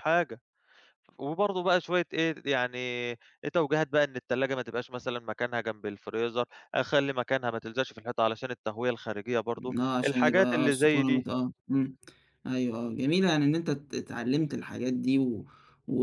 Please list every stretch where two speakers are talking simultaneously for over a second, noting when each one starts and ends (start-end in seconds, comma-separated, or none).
9.8-11.2